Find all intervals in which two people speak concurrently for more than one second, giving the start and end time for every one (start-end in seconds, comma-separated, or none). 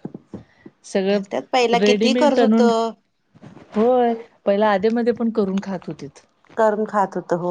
1.1-2.7